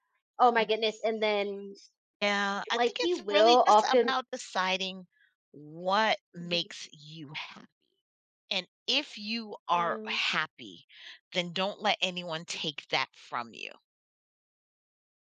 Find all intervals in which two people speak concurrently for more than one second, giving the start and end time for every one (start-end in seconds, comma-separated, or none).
2.7-4.1